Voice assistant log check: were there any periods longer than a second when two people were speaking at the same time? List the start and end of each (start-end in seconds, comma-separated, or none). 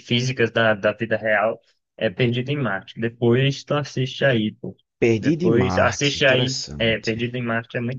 5.2-7.3